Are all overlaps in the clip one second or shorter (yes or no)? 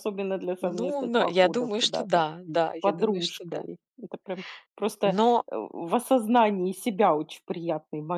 no